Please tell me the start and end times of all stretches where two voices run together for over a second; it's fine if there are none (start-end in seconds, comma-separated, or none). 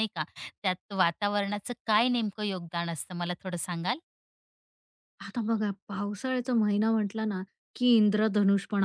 none